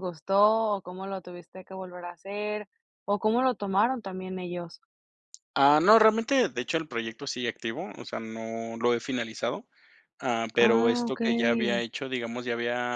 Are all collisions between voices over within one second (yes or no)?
no